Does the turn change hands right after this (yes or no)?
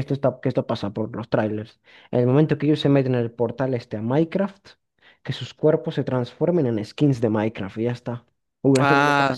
yes